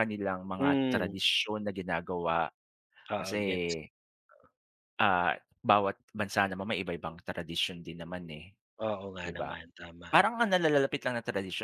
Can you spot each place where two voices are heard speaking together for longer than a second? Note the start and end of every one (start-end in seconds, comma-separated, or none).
none